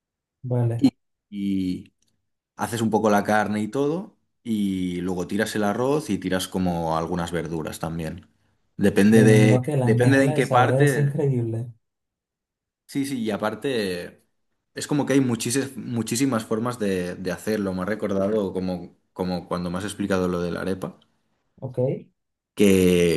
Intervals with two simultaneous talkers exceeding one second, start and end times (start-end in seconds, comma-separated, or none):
9.1-11.2